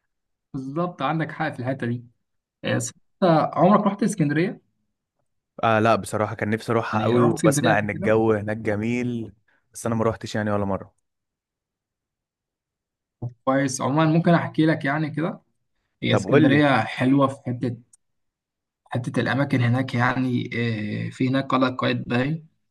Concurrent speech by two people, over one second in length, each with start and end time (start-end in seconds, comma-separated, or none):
6.9-8.1